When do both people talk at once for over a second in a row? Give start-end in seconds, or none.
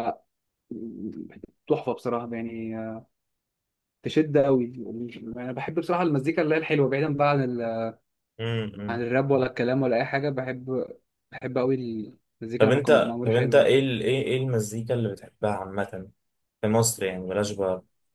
12.6-13.8